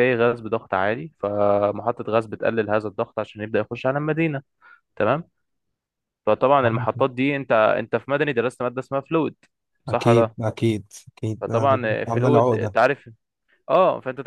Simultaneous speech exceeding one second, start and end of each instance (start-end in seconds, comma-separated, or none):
11.4-12.7